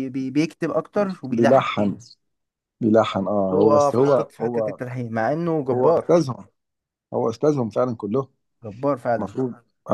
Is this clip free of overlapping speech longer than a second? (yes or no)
no